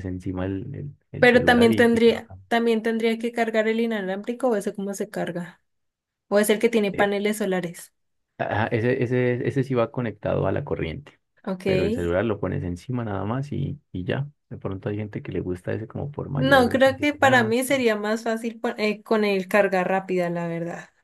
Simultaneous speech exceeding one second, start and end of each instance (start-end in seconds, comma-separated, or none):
1.2-2.5, 16.3-17.6